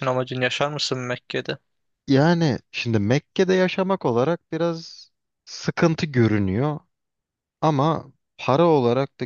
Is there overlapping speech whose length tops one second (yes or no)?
no